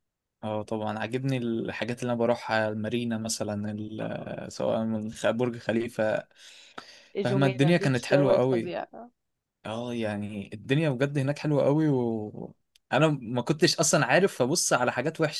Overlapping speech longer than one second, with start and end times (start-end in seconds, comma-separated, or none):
7.2-8.7